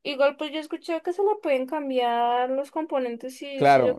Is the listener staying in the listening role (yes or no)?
no